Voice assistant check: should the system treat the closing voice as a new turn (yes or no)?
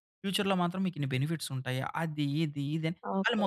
yes